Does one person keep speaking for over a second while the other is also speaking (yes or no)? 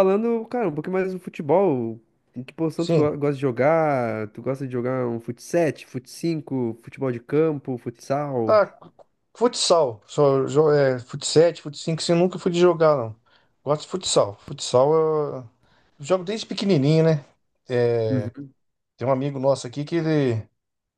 no